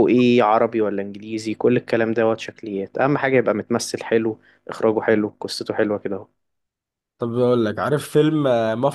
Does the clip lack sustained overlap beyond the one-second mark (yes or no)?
yes